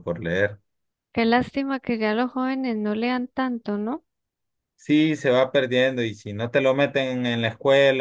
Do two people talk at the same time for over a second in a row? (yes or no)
no